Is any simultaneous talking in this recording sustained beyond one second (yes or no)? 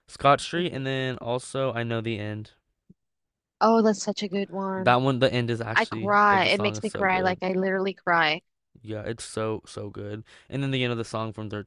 yes